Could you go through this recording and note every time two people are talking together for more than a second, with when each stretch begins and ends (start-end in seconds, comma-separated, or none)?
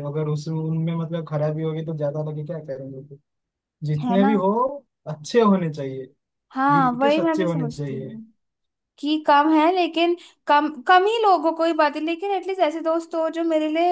6.7-8.2